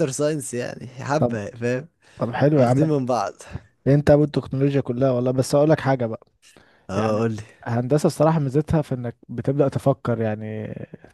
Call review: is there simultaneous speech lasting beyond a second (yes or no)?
no